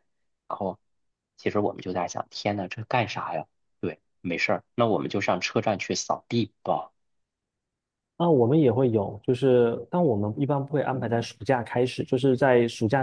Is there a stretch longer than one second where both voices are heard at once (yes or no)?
no